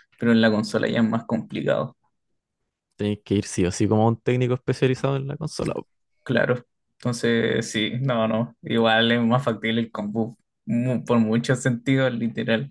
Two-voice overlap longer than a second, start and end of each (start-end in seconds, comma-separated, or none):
none